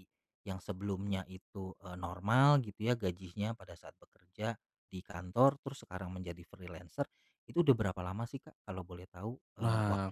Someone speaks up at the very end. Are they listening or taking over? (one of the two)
taking over